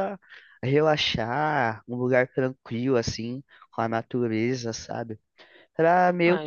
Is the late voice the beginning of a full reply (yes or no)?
no